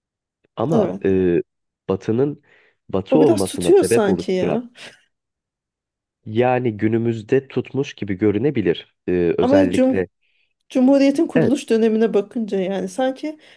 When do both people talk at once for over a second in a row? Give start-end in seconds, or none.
3.1-4.6